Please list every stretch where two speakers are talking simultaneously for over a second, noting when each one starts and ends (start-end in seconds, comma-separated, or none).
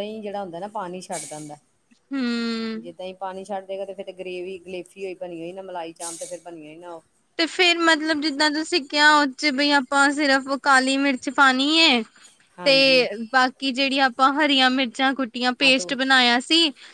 none